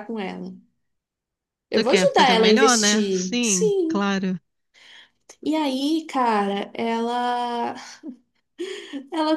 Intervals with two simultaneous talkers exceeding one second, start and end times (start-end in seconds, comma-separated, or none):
1.7-4.0